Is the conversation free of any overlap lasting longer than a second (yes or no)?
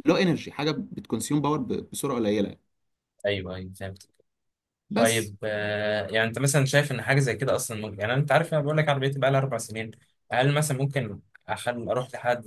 yes